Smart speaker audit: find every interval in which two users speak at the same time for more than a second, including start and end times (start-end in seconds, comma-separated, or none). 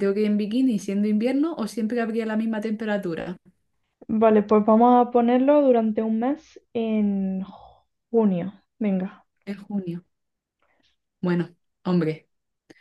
none